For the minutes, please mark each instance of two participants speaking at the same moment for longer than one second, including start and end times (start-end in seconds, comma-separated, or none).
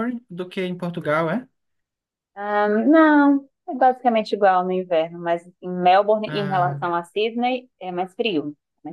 none